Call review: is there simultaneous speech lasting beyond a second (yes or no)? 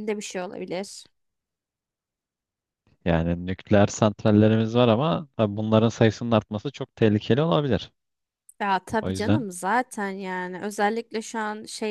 no